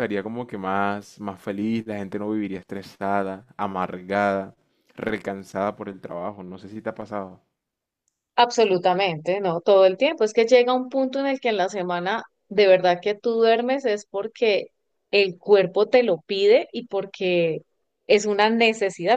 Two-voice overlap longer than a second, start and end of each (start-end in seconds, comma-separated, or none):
none